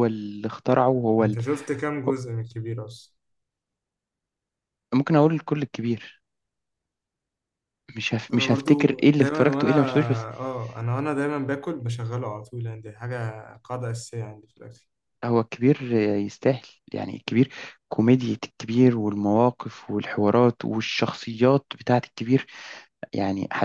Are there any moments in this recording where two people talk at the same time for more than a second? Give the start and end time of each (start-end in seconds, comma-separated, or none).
8.3-9.7